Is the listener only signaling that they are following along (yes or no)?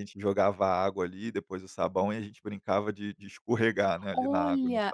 no